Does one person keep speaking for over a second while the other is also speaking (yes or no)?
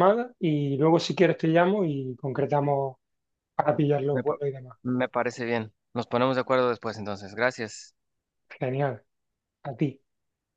no